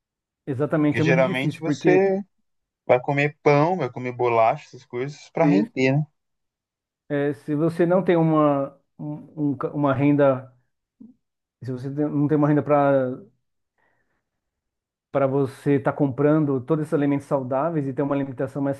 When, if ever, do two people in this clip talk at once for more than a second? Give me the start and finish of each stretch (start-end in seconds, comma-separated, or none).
0.8-2.0